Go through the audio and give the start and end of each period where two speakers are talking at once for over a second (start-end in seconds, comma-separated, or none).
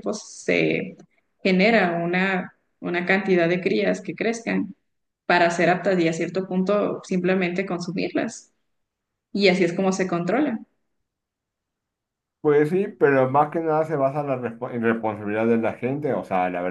none